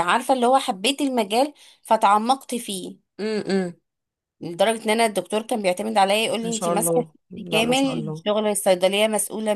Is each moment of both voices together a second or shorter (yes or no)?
no